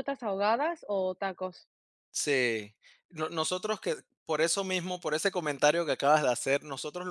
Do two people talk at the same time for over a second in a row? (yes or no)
no